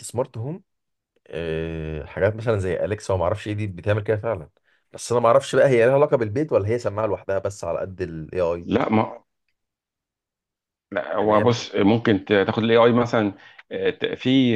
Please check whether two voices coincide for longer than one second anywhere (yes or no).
no